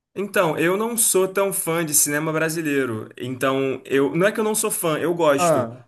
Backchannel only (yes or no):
yes